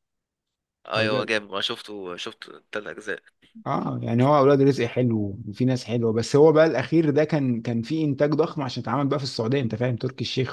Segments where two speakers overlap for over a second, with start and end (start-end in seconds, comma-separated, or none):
none